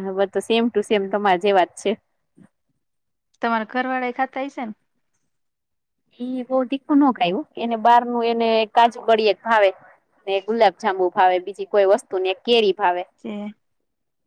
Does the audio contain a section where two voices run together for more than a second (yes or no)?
no